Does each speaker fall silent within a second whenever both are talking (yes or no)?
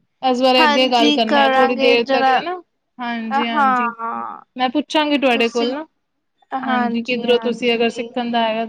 no